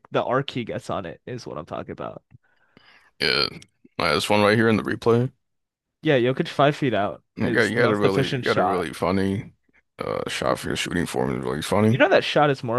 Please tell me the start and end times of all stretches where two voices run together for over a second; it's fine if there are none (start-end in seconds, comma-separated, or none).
7.3-8.9